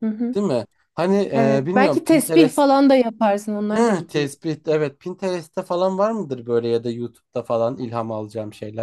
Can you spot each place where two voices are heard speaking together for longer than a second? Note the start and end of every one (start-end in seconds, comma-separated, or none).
1.3-2.6